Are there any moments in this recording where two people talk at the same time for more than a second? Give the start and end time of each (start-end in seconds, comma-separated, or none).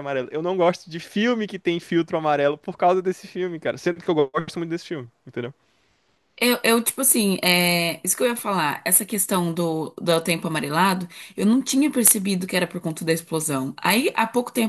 none